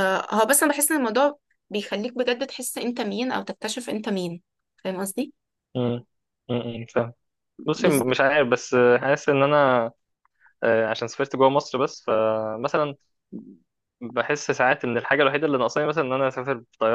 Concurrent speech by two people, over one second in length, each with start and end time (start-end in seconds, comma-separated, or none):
none